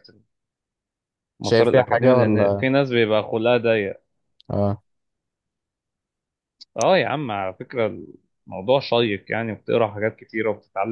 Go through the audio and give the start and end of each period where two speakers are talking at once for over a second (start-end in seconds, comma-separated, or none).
1.4-2.6